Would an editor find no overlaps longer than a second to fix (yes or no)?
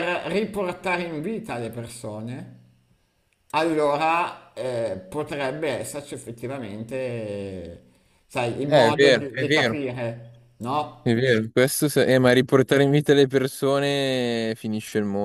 no